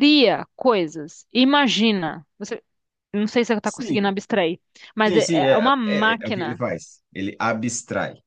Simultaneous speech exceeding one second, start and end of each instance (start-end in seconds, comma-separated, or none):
5.1-6.6